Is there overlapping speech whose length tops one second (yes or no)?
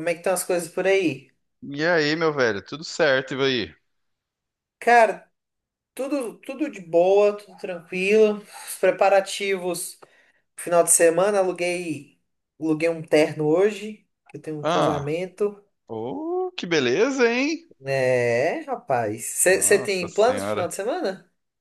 yes